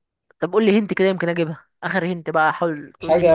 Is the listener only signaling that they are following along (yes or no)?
no